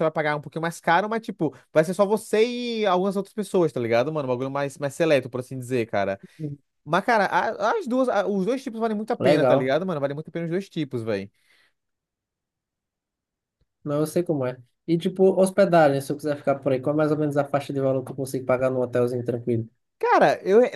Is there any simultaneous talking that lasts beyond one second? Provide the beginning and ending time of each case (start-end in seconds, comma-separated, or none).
none